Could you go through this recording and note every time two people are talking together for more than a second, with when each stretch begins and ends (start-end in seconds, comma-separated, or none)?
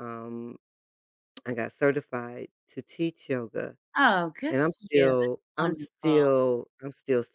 4.5-6.2